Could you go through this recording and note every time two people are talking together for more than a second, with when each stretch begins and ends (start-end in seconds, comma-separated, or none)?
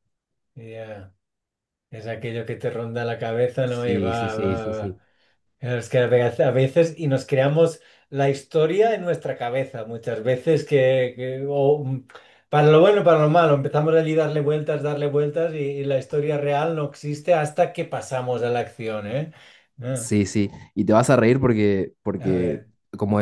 3.6-5.0